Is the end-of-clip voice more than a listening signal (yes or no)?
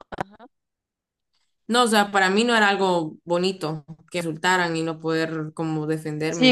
yes